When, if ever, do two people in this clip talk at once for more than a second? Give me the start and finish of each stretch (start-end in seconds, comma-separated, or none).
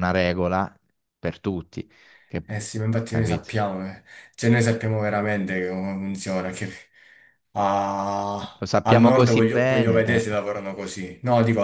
8.6-10.2